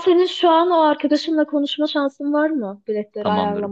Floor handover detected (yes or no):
yes